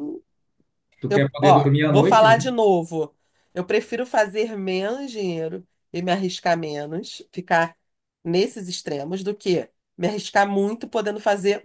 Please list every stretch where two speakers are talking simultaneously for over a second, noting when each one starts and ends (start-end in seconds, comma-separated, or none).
1.1-2.5